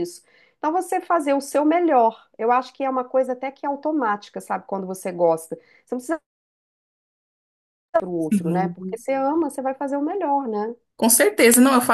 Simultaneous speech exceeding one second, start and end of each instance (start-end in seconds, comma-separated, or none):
none